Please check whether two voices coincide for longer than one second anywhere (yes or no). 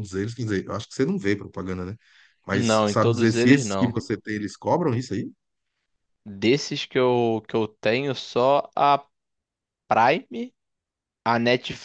yes